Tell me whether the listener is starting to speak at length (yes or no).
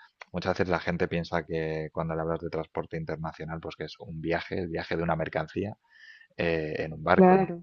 no